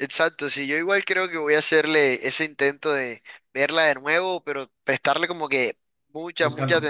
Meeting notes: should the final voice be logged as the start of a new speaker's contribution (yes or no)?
no